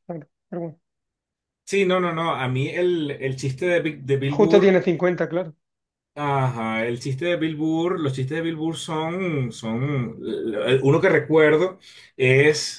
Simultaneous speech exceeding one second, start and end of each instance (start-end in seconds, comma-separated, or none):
none